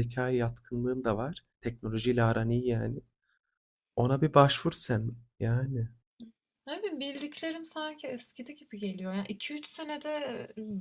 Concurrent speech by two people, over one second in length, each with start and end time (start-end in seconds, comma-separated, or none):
none